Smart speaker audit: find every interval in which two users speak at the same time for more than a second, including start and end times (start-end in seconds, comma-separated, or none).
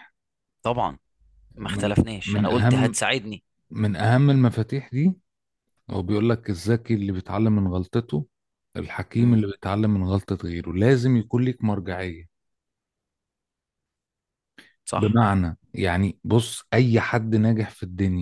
1.6-3.0